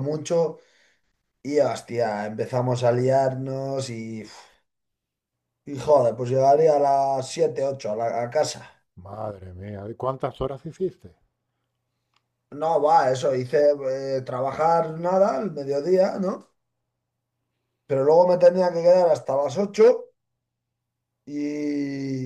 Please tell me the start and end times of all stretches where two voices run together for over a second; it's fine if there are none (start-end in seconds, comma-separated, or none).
none